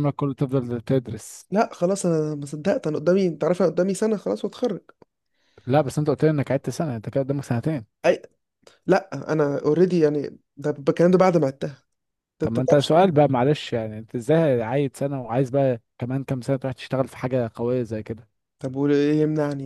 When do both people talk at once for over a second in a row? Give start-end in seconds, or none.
none